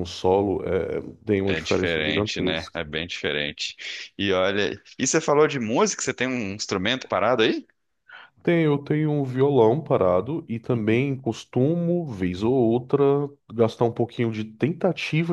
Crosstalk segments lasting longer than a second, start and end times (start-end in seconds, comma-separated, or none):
1.4-2.8